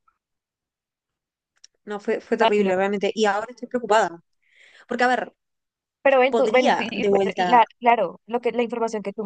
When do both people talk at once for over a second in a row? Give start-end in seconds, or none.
6.3-7.6